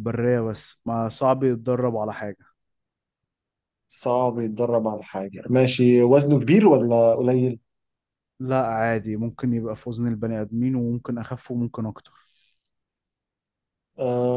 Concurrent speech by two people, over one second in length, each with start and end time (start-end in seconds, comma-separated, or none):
none